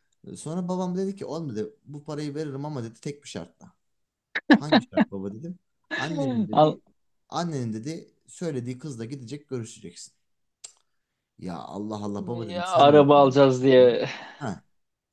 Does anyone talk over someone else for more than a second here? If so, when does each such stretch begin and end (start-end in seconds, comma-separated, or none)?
12.5-13.9